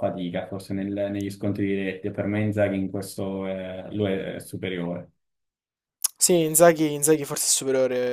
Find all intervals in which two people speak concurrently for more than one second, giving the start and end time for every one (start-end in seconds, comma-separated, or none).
none